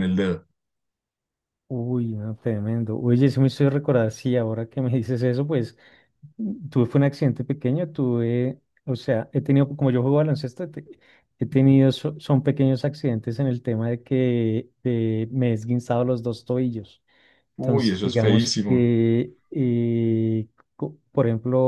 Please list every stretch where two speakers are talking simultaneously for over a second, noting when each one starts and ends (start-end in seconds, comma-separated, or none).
17.6-18.9